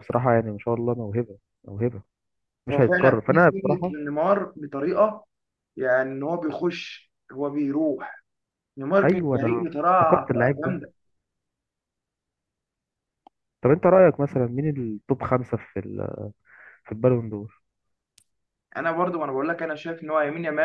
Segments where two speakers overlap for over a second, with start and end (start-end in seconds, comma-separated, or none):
2.7-4.0, 9.0-10.8